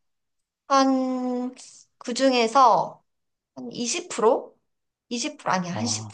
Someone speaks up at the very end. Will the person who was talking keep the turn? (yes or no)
yes